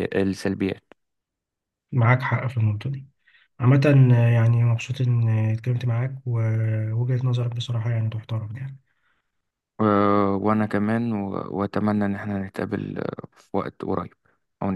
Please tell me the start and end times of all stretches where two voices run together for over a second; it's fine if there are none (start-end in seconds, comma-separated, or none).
none